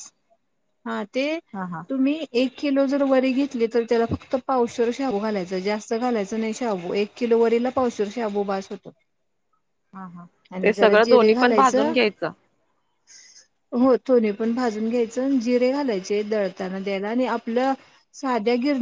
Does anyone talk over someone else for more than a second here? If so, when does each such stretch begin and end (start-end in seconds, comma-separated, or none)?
10.6-11.9